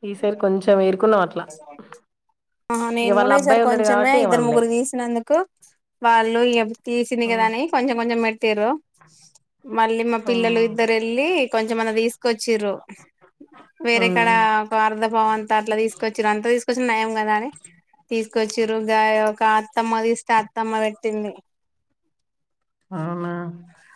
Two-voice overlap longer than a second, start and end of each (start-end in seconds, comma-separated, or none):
3.0-4.6